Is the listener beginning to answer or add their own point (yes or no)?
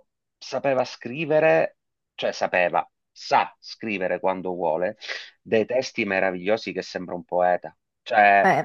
no